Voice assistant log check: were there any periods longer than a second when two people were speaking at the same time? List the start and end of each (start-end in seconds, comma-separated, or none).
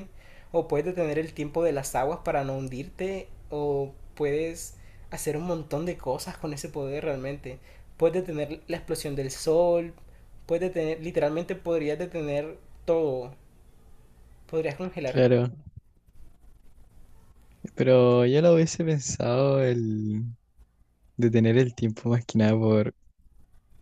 none